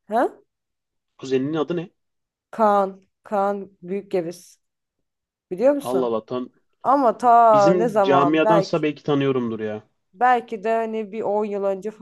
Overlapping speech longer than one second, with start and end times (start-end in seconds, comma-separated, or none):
7.2-8.8